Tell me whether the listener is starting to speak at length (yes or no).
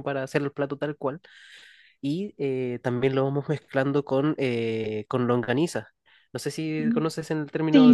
yes